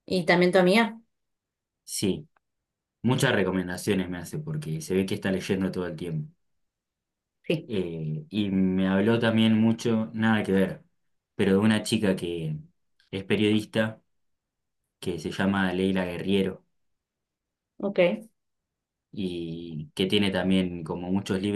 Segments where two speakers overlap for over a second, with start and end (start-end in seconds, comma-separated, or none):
none